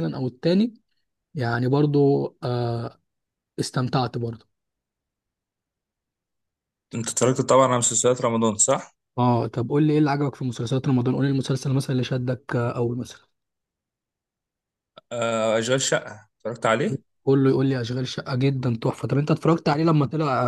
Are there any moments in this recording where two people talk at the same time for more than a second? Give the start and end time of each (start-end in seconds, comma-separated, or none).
none